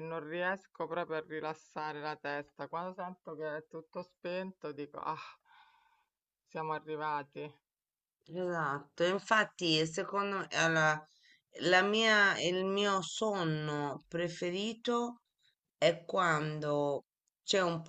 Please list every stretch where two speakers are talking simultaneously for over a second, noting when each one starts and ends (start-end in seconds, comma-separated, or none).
none